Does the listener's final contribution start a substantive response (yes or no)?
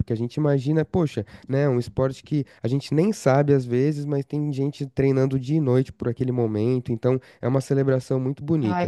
yes